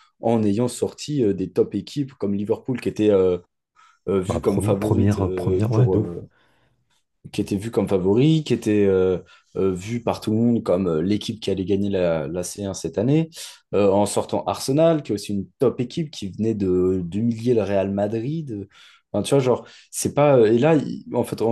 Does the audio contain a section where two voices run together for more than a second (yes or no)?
yes